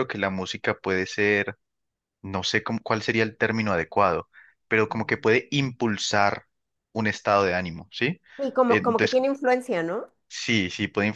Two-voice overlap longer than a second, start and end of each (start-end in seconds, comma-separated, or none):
none